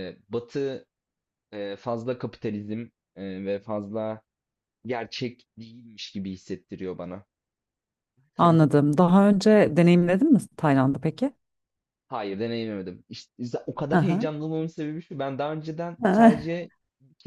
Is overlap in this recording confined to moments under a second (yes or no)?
yes